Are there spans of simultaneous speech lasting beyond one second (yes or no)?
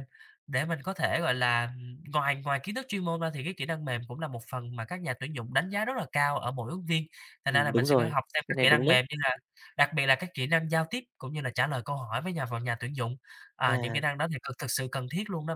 yes